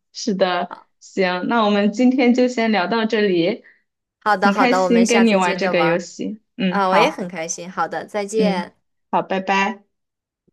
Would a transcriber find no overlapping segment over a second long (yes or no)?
no